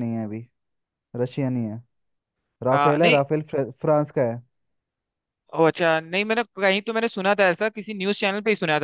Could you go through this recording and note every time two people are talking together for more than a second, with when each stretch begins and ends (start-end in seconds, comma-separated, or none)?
none